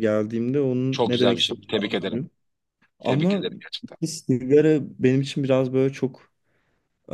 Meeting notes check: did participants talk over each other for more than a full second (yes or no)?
yes